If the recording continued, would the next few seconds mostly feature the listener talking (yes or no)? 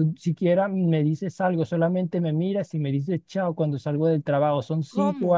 no